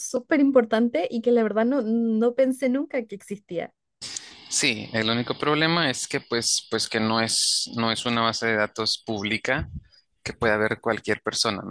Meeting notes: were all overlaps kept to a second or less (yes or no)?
yes